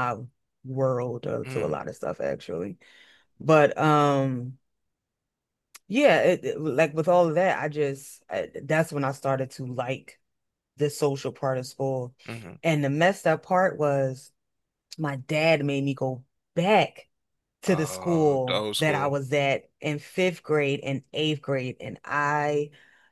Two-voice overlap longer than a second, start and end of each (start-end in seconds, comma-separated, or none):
17.7-19.1